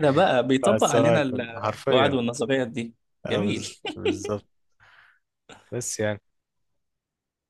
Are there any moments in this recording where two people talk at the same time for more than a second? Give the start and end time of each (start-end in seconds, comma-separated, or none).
0.6-2.2